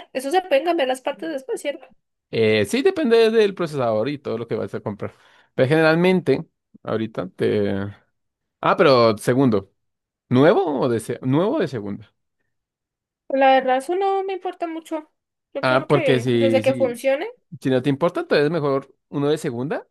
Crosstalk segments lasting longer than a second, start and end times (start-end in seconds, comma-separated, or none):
15.6-17.0